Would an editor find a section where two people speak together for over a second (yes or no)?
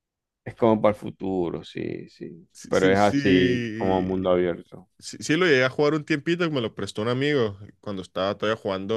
yes